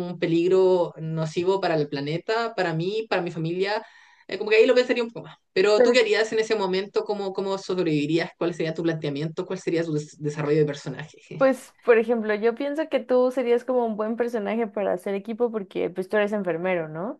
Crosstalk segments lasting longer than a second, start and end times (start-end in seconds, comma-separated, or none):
none